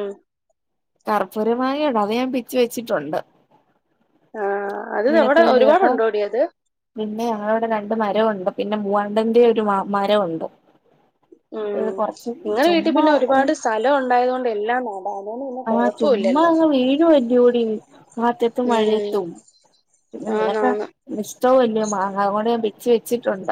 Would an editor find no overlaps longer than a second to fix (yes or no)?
yes